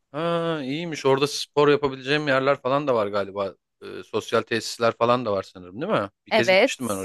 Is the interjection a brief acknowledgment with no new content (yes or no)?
no